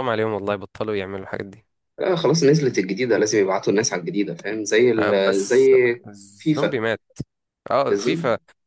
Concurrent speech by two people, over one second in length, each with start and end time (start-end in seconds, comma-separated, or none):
none